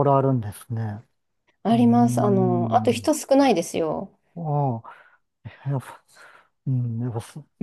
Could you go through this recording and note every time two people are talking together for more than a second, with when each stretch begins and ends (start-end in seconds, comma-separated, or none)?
1.7-3.1